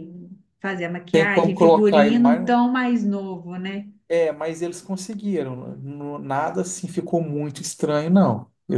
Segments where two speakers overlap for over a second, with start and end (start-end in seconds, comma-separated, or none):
1.1-2.5